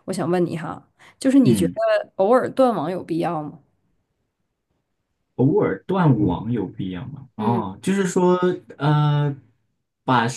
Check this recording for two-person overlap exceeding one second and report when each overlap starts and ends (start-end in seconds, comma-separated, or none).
none